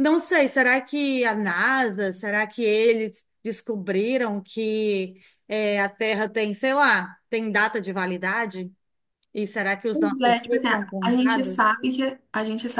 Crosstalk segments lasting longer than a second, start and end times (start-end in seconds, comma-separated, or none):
9.9-11.6